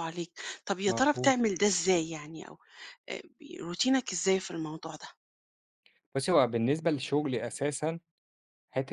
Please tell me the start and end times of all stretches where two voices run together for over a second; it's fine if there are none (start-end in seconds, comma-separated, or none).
none